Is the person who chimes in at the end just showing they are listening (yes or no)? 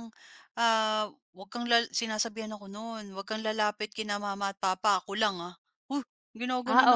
no